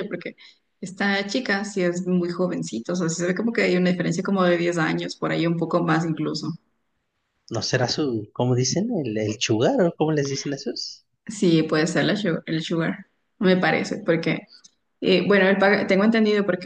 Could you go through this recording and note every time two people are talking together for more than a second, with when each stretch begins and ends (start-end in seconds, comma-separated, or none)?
none